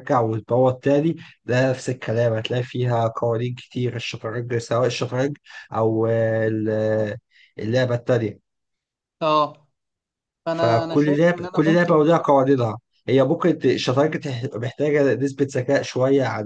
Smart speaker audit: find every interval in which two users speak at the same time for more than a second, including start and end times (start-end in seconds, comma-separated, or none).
10.5-12.1